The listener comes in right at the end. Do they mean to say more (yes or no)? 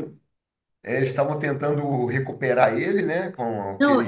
yes